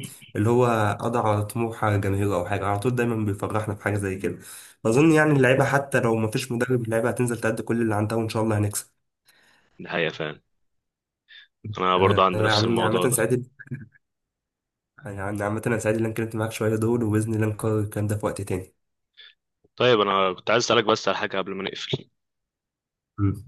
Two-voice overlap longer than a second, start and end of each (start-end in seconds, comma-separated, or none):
12.0-13.2